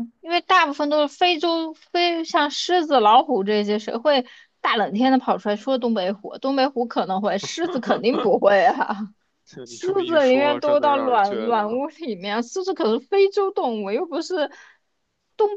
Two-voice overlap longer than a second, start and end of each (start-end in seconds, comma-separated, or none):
9.7-11.8